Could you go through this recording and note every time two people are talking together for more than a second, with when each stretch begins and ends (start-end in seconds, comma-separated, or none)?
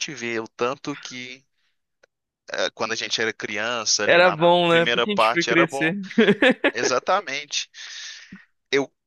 4.1-5.9